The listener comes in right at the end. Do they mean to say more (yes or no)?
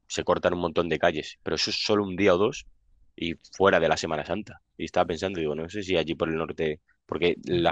no